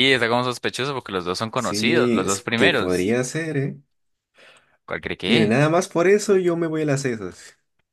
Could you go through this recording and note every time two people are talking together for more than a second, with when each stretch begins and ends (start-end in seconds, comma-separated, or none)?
1.6-3.2